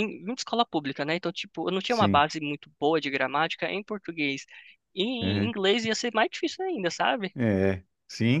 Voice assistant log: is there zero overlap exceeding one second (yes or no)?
yes